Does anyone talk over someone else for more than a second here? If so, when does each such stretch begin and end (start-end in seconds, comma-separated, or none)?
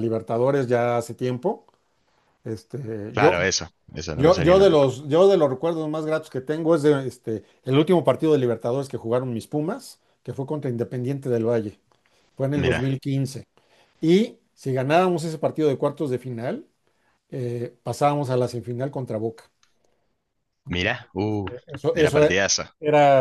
none